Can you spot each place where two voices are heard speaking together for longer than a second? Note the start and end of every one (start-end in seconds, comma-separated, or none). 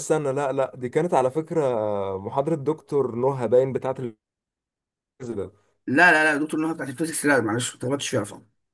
none